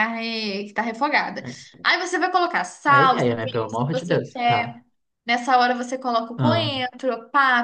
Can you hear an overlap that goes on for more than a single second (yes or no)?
yes